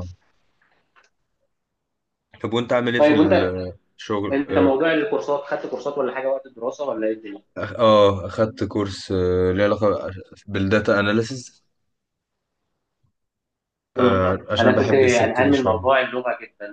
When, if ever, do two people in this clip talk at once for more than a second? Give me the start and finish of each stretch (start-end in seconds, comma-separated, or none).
14.0-15.9